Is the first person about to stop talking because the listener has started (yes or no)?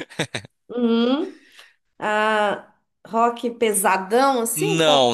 yes